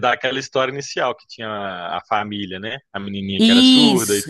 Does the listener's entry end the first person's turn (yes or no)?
yes